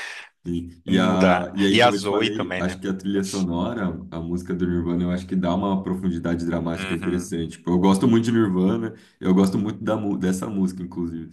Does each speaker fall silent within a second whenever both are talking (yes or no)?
no